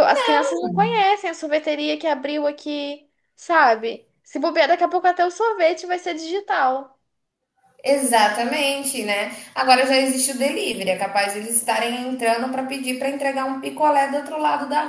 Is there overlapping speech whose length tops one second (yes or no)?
no